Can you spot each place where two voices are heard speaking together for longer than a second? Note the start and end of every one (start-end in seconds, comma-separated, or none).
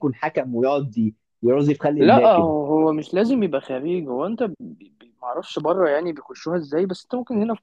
none